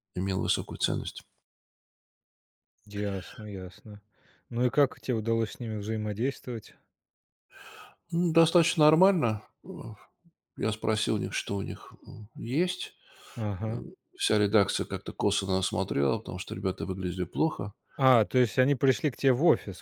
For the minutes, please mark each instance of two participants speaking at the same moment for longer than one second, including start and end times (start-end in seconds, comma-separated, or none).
none